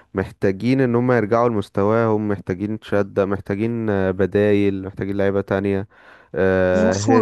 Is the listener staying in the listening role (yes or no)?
no